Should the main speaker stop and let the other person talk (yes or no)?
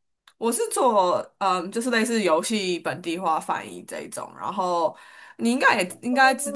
yes